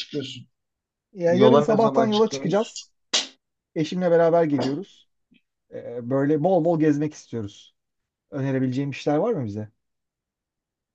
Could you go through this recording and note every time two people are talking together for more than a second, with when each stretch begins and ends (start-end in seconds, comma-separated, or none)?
1.3-2.7